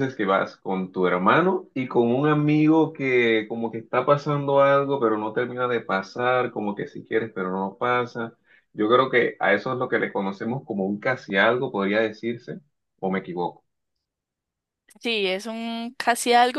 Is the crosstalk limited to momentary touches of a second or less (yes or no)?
yes